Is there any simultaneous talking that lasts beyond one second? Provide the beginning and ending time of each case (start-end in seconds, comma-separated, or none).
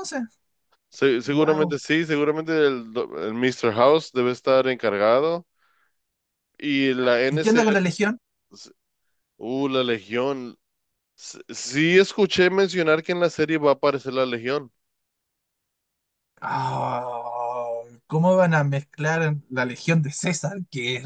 none